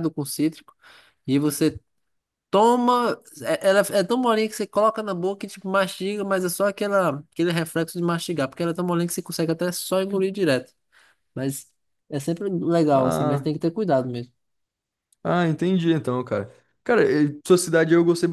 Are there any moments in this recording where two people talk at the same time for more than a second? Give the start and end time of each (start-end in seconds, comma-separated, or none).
none